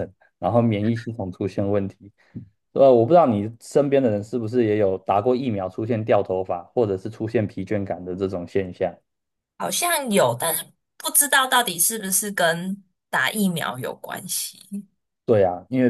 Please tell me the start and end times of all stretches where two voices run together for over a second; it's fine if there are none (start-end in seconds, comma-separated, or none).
none